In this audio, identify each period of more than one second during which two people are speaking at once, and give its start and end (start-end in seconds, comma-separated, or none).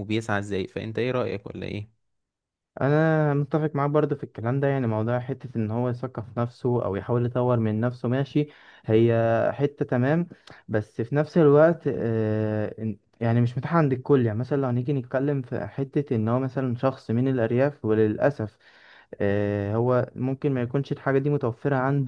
none